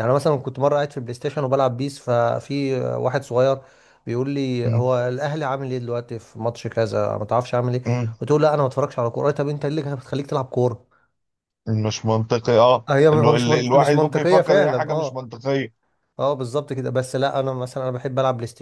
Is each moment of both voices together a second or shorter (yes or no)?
no